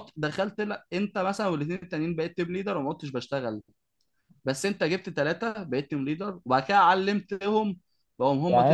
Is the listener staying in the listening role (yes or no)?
no